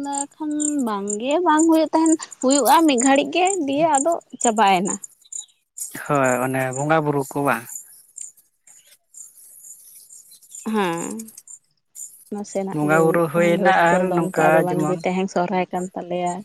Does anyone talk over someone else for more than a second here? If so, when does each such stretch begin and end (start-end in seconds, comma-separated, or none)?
12.7-15.0